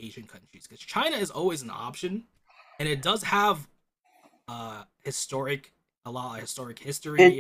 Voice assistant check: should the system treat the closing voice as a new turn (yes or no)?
yes